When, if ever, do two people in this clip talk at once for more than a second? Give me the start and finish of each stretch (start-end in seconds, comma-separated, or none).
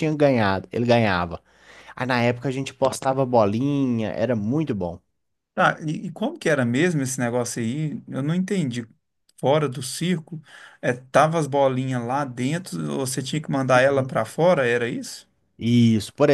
none